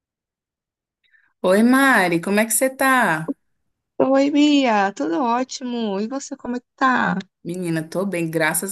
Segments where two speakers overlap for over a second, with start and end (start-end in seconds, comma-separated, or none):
none